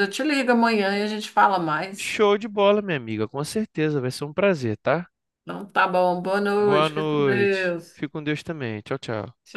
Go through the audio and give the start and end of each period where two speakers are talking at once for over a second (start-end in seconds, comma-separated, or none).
6.6-8.0